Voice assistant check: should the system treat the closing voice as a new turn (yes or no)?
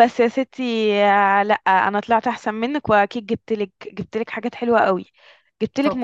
no